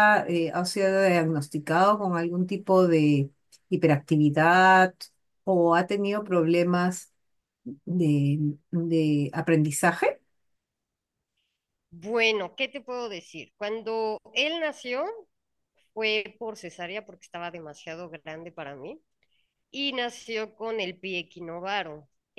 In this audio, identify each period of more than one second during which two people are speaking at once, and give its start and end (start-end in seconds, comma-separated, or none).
none